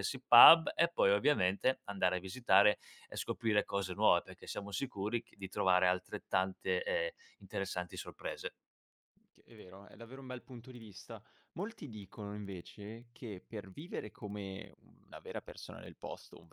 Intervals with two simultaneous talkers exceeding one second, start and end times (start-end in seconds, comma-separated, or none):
none